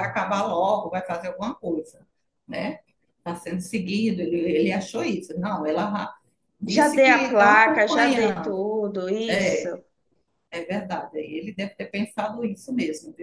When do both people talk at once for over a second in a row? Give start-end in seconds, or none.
6.7-8.6